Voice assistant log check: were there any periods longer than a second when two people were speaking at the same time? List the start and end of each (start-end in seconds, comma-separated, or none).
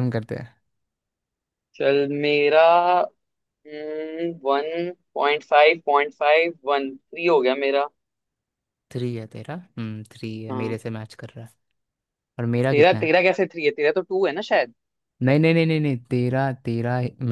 none